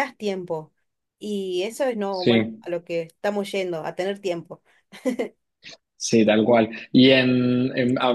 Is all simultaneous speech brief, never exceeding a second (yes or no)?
yes